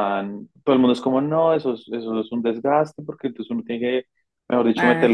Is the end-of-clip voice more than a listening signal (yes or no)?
no